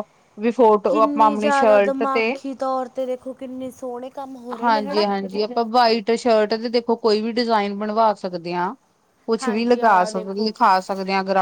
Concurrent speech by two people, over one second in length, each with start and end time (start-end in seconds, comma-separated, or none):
0.9-2.3